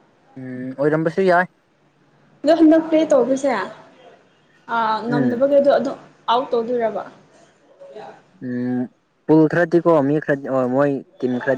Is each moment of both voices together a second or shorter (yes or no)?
yes